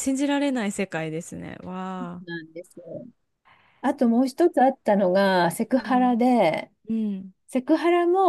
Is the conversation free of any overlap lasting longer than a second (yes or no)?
yes